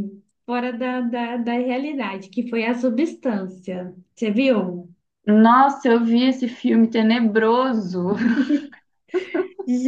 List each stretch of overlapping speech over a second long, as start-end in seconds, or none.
none